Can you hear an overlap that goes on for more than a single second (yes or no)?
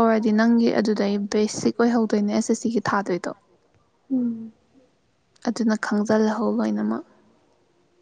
yes